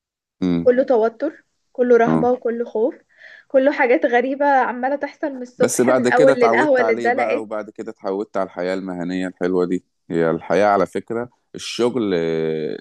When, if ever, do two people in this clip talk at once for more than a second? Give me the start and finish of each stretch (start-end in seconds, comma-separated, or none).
5.6-7.5